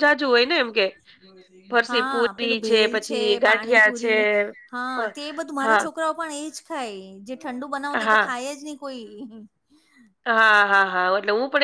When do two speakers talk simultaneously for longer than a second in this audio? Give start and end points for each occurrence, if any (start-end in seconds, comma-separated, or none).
1.9-4.1